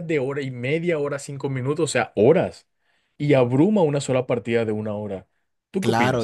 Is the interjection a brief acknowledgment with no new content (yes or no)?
no